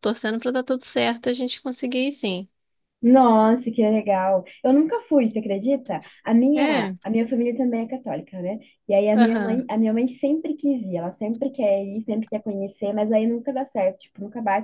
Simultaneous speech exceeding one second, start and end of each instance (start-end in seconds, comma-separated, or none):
none